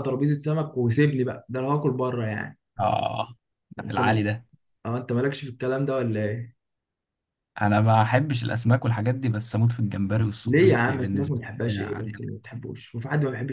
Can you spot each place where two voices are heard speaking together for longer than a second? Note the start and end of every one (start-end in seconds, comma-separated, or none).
10.4-12.3